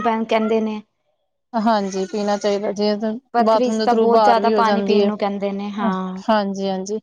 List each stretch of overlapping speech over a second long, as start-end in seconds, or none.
3.3-5.1